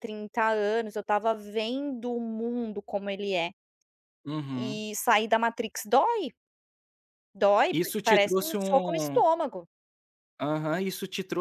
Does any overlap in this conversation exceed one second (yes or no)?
yes